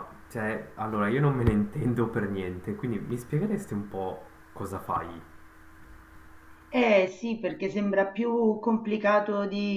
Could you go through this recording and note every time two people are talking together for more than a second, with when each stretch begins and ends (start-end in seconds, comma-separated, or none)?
none